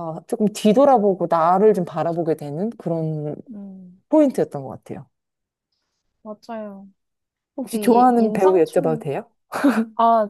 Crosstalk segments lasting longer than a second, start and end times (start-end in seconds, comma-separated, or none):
7.7-9.1